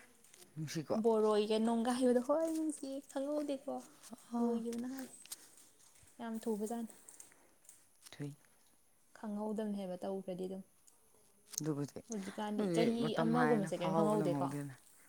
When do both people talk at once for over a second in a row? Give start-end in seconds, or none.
12.6-14.5